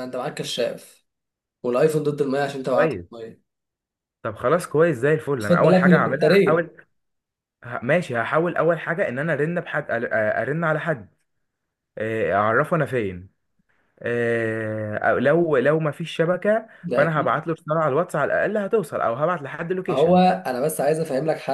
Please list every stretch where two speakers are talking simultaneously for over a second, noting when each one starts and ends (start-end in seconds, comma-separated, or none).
5.4-6.7